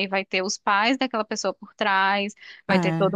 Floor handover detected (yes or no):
no